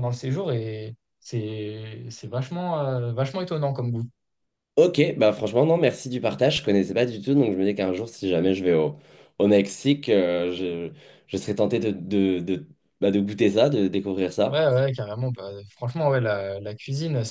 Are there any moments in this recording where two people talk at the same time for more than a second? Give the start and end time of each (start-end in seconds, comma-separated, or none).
none